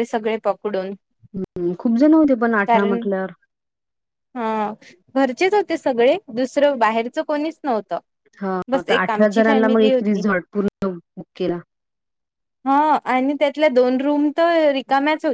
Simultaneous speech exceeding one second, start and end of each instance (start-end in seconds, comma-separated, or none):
8.8-10.2